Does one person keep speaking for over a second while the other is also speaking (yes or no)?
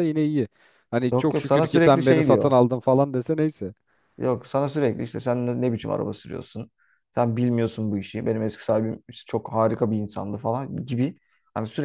yes